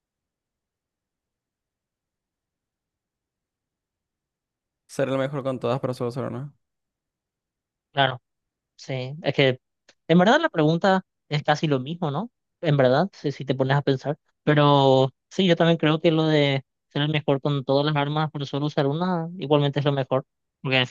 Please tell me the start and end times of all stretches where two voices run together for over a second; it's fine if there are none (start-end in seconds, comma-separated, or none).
none